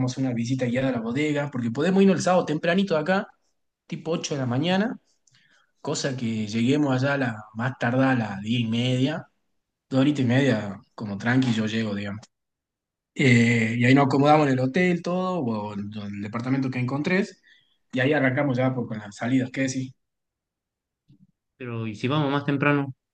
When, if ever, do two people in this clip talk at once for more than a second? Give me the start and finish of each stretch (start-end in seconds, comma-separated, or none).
none